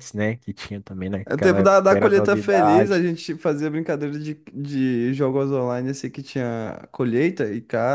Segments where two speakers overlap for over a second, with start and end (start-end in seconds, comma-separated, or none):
1.2-3.0